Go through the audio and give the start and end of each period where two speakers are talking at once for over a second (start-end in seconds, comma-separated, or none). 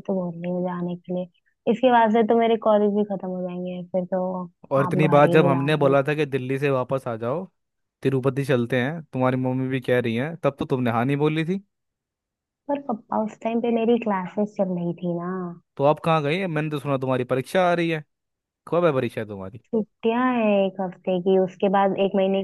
4.9-6.1